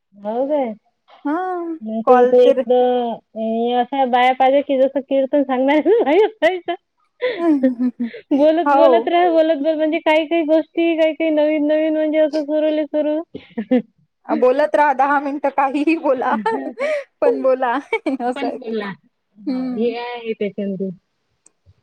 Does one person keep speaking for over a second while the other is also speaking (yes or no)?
no